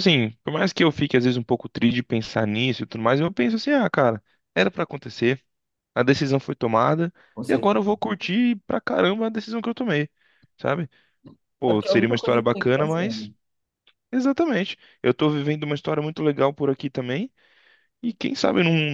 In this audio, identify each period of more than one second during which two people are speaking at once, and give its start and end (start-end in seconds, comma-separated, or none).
11.7-13.3